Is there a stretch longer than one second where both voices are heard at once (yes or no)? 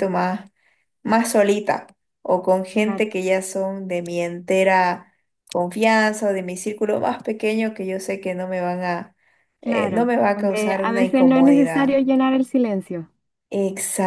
yes